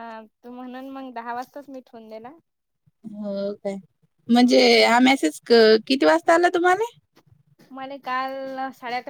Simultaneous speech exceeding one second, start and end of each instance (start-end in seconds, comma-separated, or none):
none